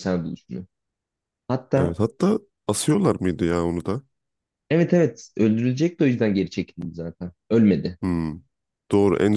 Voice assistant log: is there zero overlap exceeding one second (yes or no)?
yes